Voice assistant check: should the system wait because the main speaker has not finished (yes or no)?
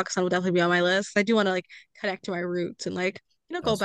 yes